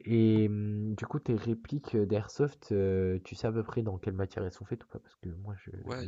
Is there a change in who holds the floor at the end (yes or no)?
yes